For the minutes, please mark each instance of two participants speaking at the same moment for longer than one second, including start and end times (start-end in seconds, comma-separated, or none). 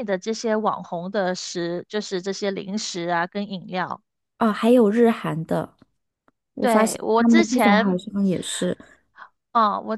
6.6-8.0